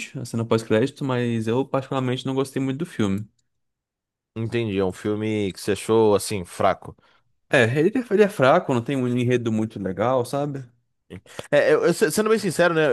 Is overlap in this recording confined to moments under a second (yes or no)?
yes